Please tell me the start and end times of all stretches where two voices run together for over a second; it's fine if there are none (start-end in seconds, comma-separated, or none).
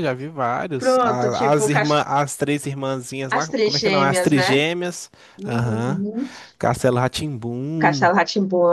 0.8-2.0, 3.3-4.7